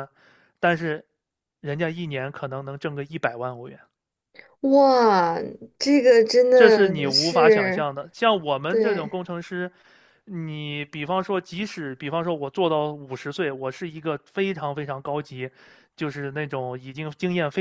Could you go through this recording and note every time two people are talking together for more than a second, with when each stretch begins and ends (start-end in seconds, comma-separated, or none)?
6.5-7.8